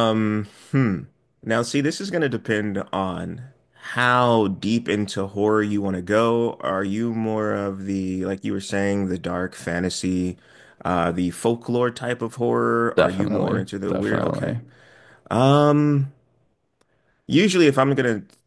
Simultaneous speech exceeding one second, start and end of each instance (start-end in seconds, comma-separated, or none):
13.0-14.6